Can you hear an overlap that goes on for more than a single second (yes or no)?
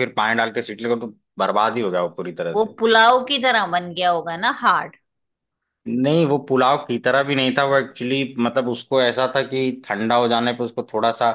no